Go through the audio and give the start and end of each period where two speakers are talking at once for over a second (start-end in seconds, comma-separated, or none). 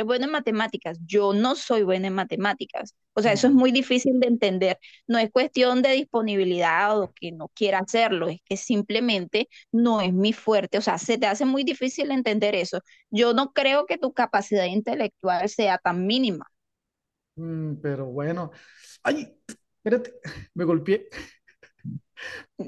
none